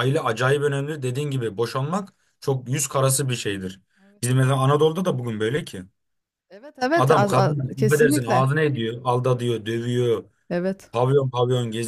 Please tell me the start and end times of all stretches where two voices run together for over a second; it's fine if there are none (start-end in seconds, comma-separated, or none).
6.9-8.5